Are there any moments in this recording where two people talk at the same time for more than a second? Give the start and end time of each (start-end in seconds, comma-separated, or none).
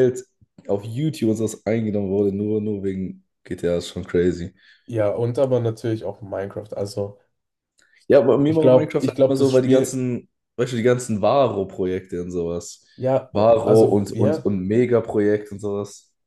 8.4-10.0, 13.3-14.5